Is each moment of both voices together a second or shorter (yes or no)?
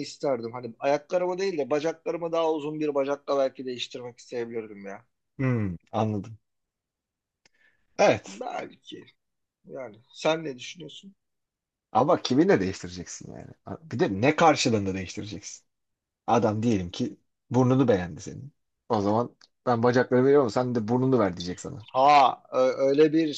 yes